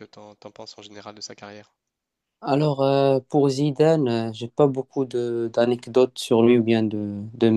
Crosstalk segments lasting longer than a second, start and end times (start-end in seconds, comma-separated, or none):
none